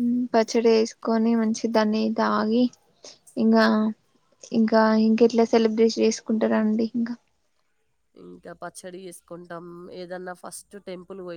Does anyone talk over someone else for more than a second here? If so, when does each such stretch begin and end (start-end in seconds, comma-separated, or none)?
none